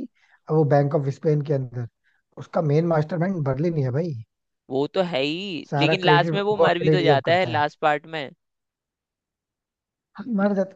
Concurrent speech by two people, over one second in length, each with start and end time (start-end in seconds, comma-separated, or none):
5.7-7.6